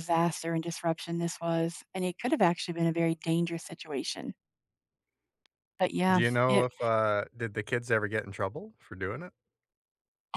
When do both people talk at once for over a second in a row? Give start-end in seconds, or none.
none